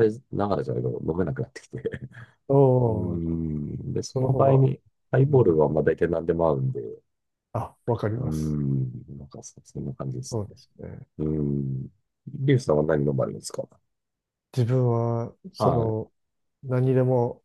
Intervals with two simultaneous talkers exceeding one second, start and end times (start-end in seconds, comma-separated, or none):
none